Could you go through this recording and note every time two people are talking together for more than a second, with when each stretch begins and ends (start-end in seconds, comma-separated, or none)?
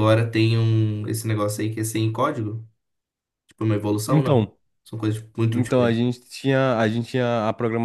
none